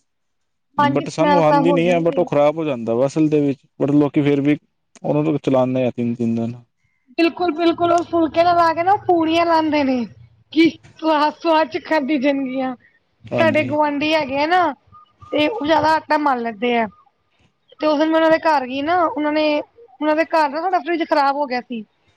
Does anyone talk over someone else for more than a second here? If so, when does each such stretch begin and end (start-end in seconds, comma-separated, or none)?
0.9-2.2